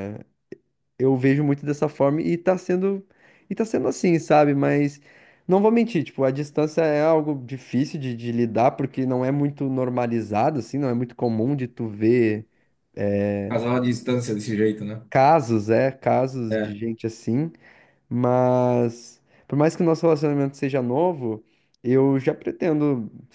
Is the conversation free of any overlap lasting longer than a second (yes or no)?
yes